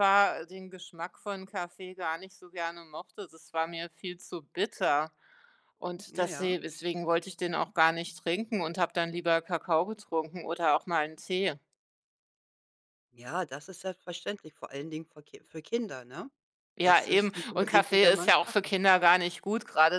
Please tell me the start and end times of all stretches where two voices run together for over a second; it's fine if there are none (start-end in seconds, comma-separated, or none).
16.8-18.7